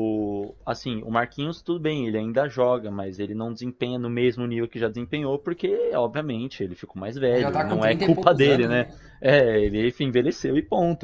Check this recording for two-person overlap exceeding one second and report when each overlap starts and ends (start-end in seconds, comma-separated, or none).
7.3-9.0